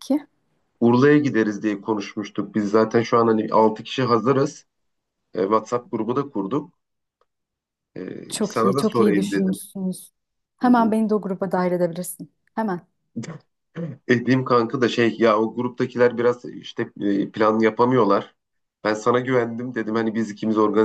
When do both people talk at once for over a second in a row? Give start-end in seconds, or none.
8.3-9.6